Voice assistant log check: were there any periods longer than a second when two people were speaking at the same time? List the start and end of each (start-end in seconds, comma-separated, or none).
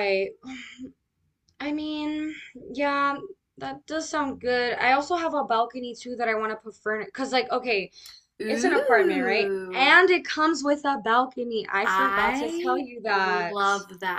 8.5-9.9, 11.8-13.6